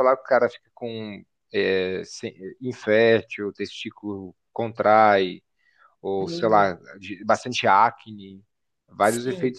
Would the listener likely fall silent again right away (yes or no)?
no